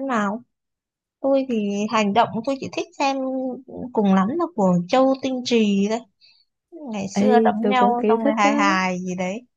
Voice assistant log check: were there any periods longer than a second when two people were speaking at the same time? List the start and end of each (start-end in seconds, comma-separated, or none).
7.1-8.7